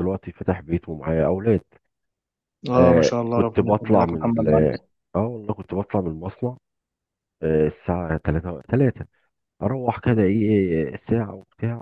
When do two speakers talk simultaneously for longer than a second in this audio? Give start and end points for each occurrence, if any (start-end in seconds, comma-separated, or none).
2.8-4.5